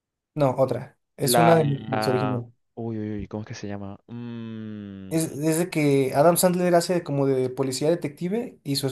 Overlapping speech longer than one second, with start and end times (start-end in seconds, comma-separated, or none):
1.2-2.4